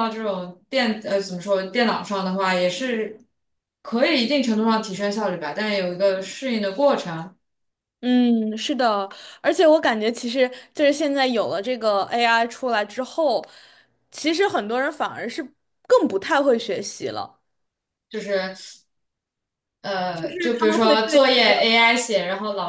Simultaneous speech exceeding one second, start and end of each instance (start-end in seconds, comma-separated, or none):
20.1-21.5